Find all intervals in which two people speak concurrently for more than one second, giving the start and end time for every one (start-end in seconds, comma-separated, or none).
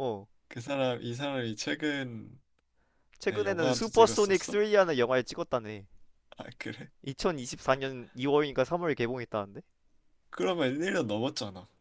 3.3-4.6